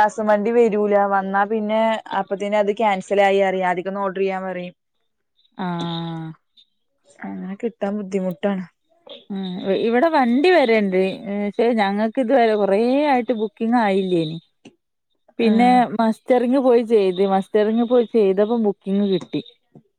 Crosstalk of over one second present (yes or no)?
no